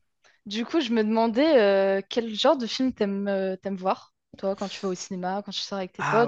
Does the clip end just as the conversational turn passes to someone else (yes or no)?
yes